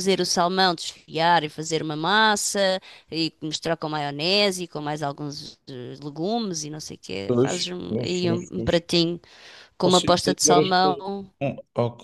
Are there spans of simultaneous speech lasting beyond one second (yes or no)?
yes